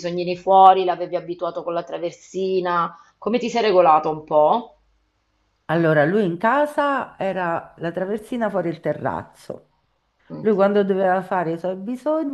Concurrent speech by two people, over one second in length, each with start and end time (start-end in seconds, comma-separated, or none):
none